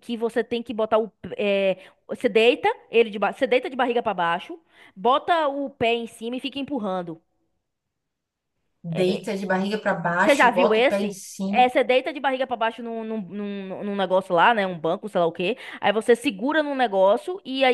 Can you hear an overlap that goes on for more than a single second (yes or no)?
yes